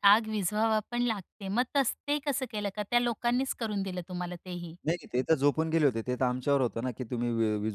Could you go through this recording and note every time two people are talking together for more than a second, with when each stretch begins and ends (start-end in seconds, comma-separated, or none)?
none